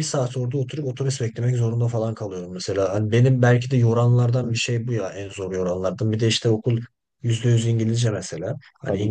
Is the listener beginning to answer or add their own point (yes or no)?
no